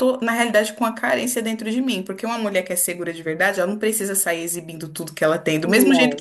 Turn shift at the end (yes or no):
no